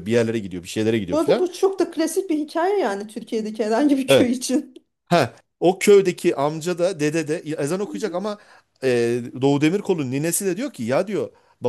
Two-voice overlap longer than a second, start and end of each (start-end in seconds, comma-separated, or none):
none